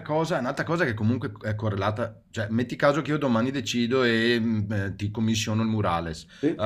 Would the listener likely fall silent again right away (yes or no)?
yes